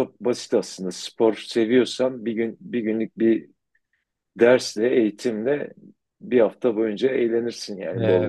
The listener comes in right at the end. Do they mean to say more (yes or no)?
yes